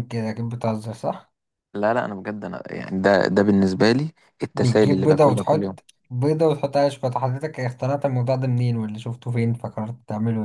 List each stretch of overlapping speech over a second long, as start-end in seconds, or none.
4.5-5.8